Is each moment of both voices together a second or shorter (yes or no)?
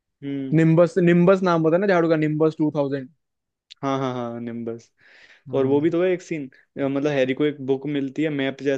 yes